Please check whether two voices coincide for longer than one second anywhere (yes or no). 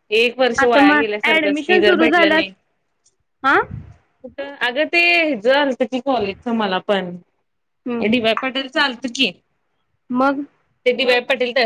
yes